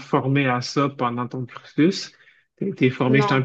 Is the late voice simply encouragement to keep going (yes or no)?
yes